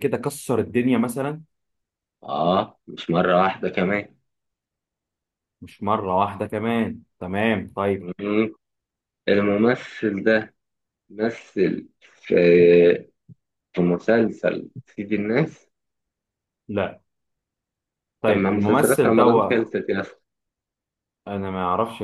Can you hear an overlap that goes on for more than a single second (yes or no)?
yes